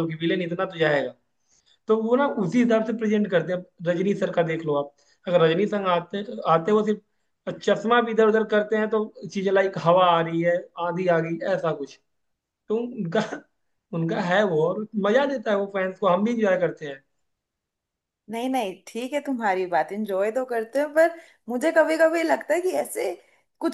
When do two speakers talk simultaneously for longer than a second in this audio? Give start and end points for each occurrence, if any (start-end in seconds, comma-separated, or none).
none